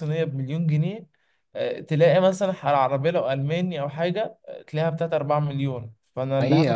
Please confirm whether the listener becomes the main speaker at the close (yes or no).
yes